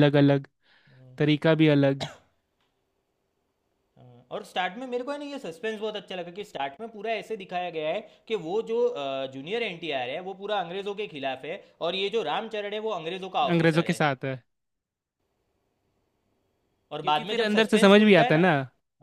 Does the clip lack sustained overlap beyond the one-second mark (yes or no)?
no